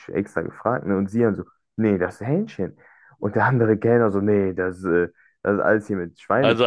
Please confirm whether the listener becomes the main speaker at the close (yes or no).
yes